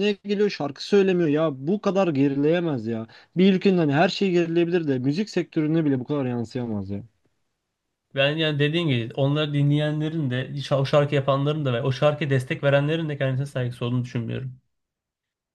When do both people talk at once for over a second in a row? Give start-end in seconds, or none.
none